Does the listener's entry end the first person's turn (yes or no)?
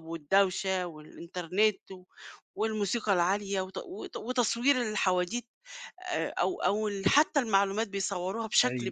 no